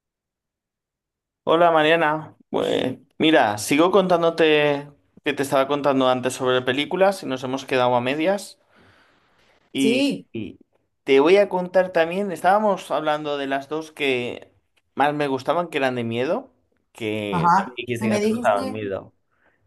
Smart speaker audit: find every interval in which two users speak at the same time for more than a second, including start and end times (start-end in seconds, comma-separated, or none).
17.3-18.8